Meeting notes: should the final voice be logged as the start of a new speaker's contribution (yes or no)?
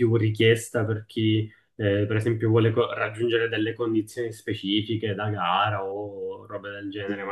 no